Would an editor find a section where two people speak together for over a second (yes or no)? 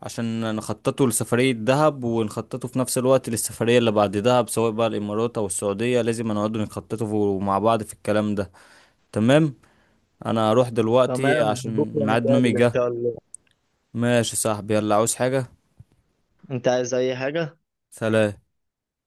yes